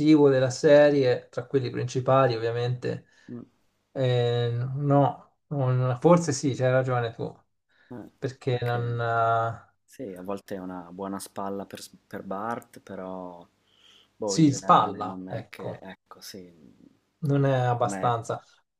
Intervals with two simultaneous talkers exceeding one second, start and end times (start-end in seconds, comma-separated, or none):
14.2-15.8